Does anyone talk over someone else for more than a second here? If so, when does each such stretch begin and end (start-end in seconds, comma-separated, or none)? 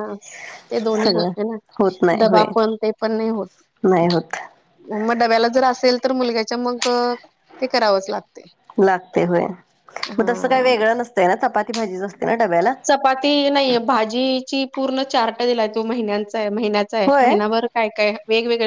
none